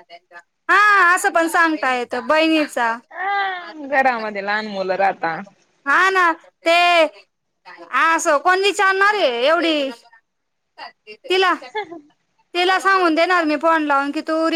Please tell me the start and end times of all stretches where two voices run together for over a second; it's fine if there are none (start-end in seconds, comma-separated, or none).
none